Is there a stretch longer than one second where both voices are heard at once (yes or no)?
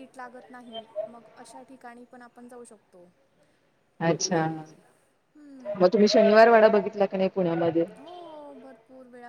no